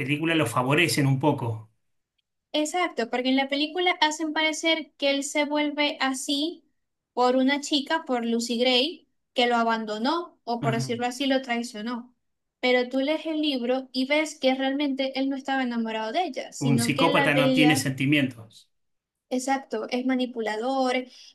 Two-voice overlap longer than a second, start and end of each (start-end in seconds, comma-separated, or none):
16.6-17.9